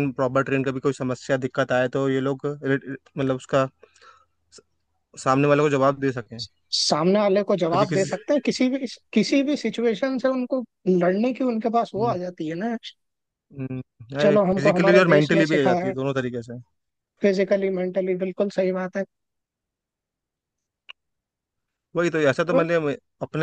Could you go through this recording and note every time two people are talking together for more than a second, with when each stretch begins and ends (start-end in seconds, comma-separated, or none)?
14.2-15.9